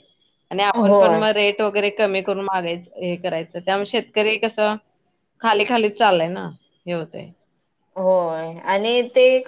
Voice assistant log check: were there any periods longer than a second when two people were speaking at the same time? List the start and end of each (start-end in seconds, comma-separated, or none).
none